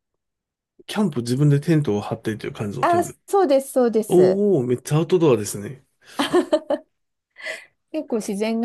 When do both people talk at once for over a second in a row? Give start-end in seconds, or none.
none